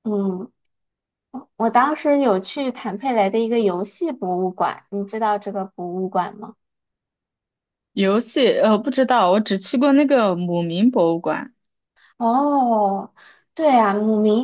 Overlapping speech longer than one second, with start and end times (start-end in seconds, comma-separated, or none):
none